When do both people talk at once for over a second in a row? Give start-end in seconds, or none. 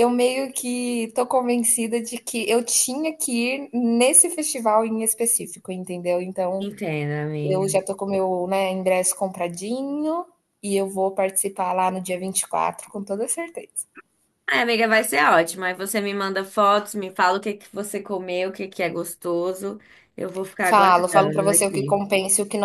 20.6-22.0